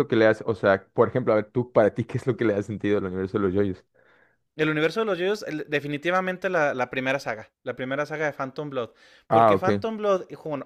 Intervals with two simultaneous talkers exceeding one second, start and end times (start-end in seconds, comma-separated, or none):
none